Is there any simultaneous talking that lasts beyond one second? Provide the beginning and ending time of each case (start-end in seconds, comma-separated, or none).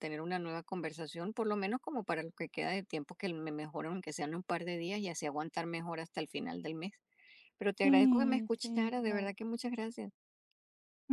7.8-9.3